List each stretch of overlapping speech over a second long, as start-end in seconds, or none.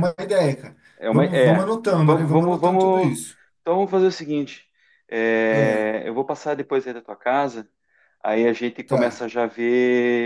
1.0-3.1